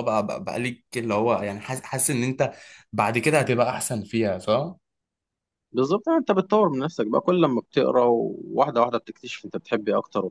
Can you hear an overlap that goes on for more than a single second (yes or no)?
no